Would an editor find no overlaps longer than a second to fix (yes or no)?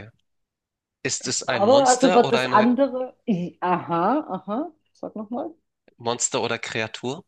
no